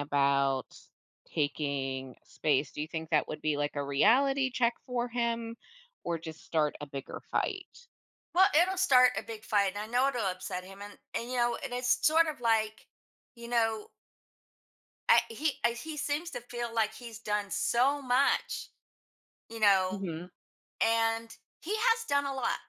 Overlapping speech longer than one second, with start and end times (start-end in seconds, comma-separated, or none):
none